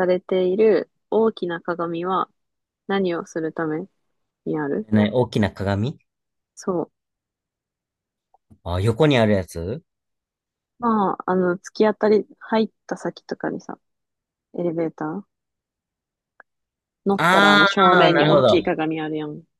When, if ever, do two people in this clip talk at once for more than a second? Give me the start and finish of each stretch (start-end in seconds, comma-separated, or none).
17.2-18.6